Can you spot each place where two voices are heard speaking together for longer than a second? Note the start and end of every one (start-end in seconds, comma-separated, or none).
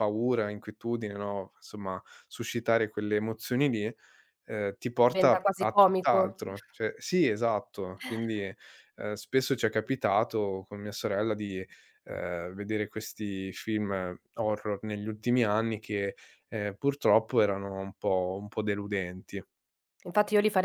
5.1-6.4